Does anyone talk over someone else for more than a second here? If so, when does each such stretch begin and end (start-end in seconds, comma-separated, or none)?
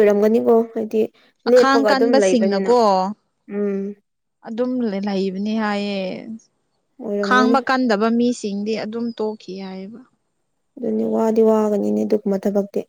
1.5-2.7